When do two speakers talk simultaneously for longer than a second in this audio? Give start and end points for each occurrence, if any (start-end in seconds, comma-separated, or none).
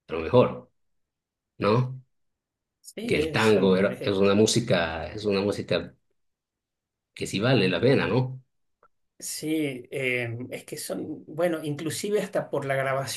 3.1-4.3